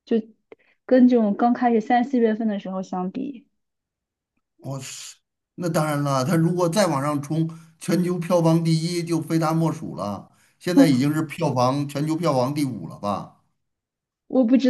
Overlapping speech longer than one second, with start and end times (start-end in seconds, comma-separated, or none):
none